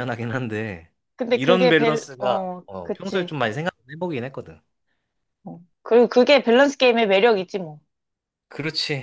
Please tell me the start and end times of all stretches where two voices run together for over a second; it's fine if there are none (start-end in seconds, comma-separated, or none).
1.3-3.4